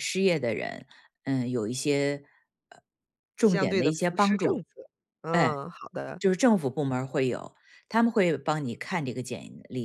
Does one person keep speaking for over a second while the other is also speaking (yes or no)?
yes